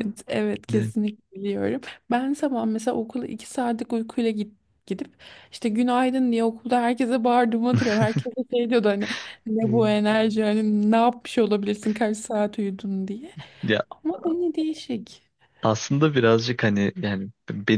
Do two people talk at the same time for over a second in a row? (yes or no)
no